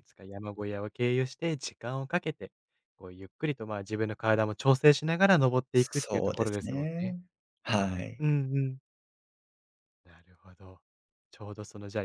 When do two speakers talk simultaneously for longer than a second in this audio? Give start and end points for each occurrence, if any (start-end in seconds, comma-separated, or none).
5.8-7.2